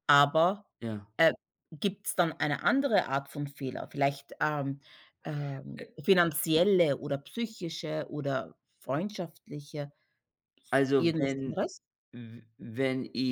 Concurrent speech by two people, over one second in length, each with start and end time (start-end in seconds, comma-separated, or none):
none